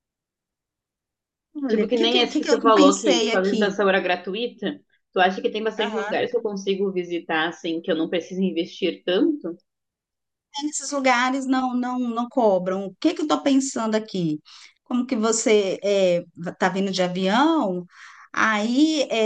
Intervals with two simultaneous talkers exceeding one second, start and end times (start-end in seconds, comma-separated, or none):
1.7-3.8